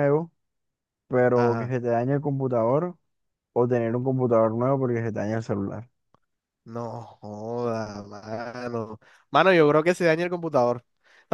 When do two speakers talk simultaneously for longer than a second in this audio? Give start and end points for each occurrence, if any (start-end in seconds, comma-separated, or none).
none